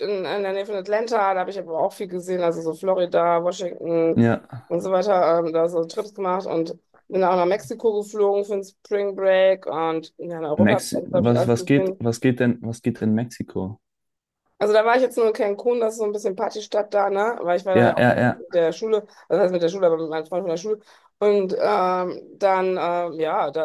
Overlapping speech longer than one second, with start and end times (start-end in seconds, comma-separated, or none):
10.6-12.0